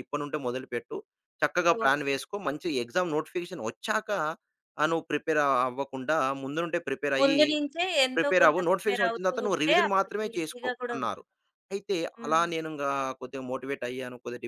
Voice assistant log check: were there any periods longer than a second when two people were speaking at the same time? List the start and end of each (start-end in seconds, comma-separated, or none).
8.2-11.2